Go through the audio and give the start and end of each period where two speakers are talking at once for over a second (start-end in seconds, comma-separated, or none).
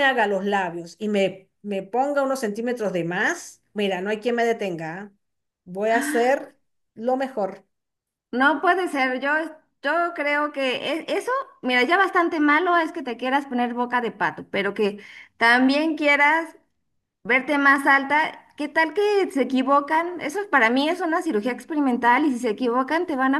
none